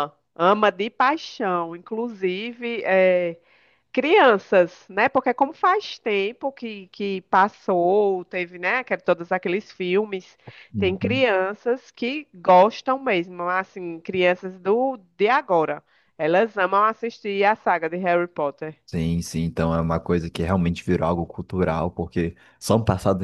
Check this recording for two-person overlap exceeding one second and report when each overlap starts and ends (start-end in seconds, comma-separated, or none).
none